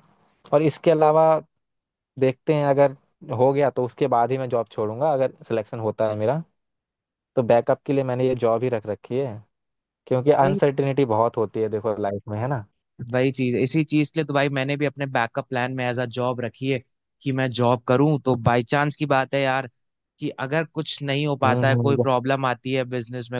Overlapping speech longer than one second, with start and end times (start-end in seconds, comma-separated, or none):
none